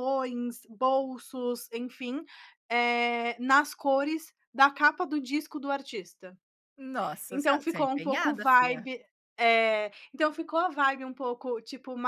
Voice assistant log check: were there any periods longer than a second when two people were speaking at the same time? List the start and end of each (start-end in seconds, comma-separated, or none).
7.3-8.9